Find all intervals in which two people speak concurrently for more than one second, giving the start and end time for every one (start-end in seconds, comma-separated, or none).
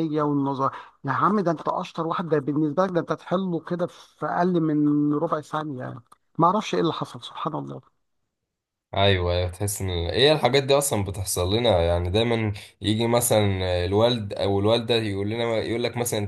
none